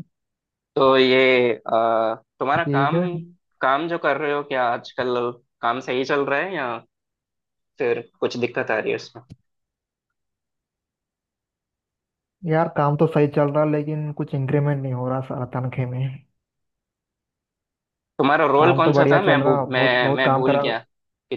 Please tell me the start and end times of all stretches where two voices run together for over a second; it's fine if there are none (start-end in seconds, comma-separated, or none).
18.6-20.6